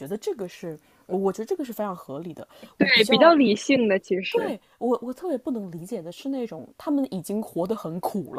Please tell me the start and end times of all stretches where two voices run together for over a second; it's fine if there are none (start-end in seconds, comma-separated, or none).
none